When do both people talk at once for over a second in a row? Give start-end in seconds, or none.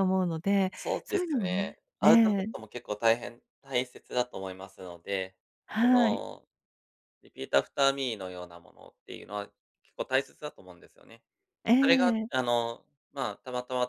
0.7-2.5